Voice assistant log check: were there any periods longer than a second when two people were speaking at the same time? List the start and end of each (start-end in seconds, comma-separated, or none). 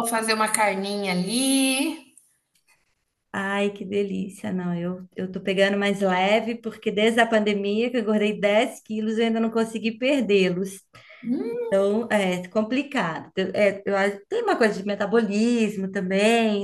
none